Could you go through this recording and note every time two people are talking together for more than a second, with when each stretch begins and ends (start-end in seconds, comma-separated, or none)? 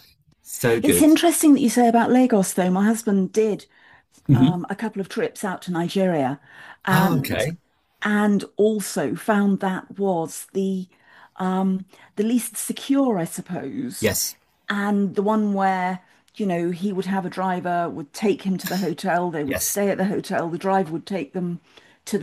none